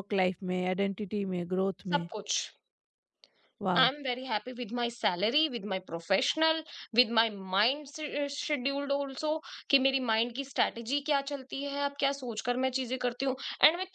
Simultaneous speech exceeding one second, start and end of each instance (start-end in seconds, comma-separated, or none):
none